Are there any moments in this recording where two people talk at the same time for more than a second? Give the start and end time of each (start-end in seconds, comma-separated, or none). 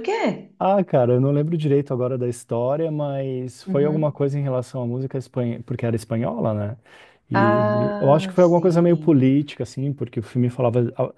7.3-9.3